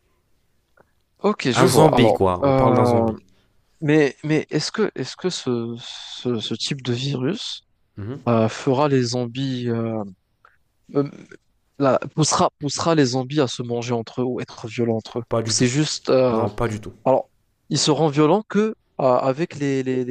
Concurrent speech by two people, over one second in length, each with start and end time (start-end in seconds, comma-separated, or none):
1.5-3.1